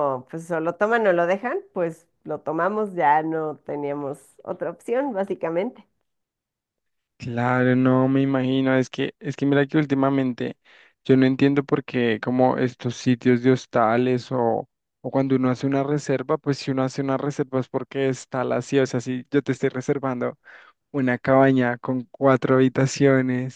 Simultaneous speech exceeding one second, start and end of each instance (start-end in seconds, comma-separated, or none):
none